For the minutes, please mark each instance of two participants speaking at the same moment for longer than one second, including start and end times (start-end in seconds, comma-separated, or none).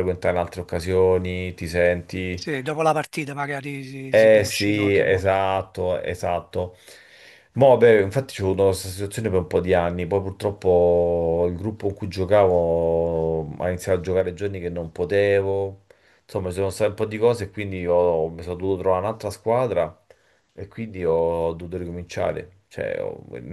4.1-5.4